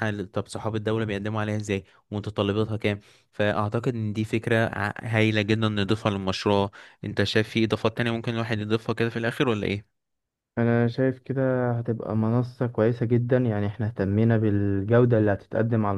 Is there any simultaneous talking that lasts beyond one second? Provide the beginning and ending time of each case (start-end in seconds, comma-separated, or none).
none